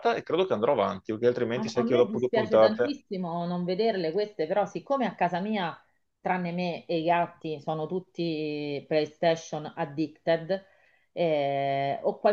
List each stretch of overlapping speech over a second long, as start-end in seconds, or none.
1.5-3.0